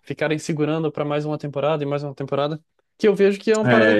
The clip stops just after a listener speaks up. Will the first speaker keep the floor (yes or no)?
yes